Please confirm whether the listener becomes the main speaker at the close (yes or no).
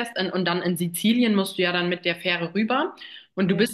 no